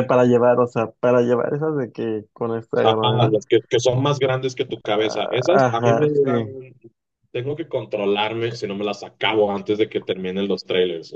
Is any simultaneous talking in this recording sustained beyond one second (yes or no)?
yes